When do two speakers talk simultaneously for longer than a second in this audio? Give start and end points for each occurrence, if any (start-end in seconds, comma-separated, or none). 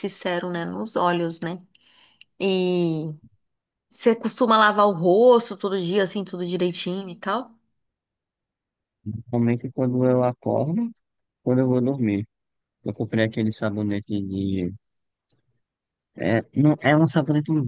none